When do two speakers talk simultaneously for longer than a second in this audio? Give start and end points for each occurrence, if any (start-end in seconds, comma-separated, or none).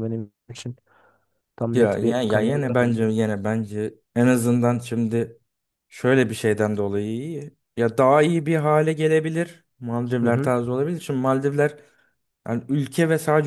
1.7-3.0